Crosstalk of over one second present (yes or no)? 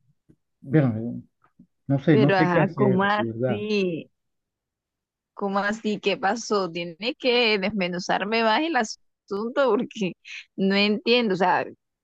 yes